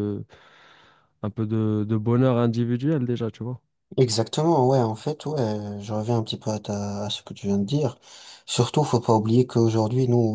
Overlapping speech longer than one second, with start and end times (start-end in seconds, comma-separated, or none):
none